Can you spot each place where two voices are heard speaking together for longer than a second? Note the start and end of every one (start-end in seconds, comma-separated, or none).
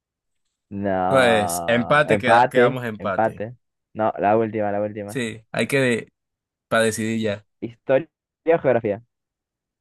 1.1-3.4